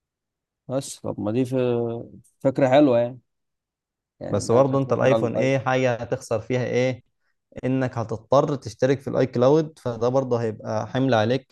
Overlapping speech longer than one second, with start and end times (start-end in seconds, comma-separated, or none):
4.3-5.6